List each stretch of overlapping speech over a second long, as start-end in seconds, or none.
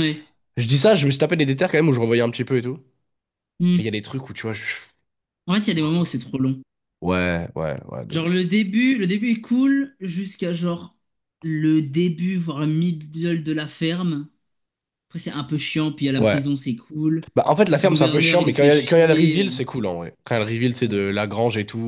17.7-19.5